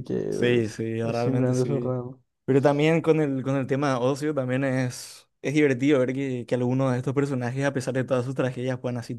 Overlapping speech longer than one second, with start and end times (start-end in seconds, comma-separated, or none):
0.6-1.9